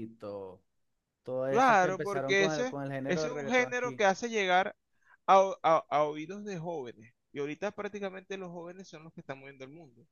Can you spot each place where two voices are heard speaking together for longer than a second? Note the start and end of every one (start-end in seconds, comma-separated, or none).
1.5-4.0